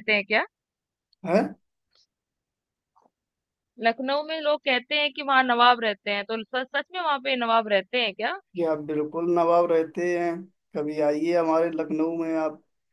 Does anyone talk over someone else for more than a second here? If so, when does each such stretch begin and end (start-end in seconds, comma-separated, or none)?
none